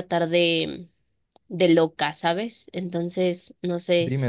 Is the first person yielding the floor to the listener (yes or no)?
yes